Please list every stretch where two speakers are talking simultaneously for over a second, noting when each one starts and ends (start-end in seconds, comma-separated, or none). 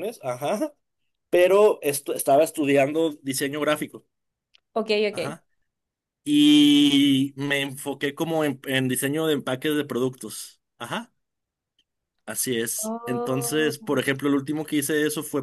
12.8-14.0